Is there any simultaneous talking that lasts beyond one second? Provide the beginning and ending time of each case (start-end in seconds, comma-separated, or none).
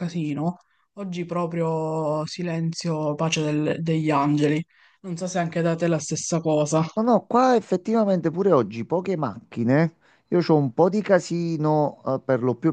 none